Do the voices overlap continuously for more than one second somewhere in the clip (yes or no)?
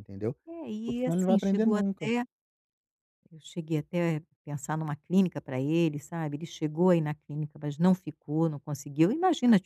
yes